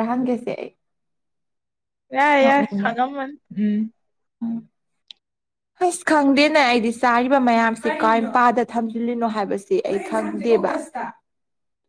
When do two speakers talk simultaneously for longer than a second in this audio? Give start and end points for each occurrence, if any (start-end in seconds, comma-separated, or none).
none